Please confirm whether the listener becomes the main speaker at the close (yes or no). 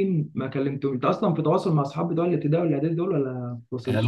yes